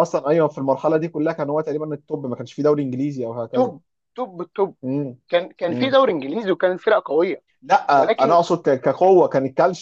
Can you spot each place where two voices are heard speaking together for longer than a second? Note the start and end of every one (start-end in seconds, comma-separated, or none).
none